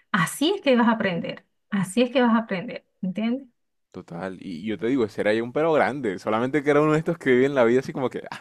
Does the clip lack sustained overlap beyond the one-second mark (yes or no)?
yes